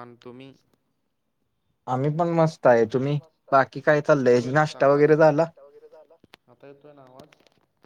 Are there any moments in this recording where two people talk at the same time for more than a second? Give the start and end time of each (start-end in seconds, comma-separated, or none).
2.7-5.4